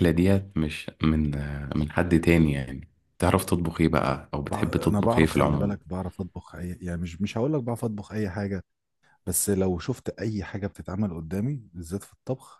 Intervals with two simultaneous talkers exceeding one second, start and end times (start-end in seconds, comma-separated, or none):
4.4-5.8